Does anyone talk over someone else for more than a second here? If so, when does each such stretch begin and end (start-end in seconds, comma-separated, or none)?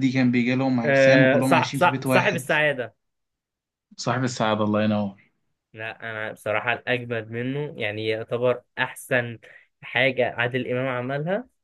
0.8-2.5